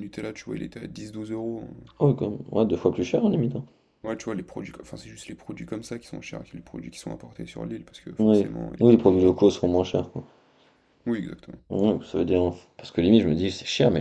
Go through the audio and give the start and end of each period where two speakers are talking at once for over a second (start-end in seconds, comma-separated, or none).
8.2-9.7